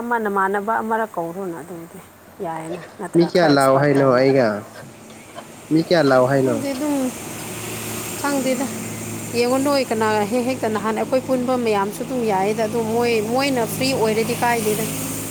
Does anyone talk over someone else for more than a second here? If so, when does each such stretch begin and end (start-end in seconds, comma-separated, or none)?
none